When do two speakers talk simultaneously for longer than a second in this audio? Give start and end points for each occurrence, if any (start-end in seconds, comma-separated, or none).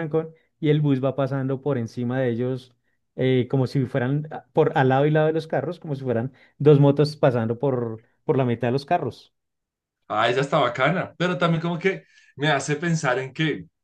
none